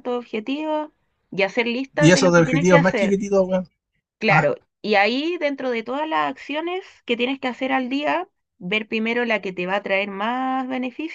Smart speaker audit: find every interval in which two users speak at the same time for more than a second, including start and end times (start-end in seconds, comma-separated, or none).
2.0-3.2